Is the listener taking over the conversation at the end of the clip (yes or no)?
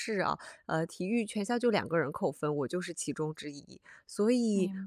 no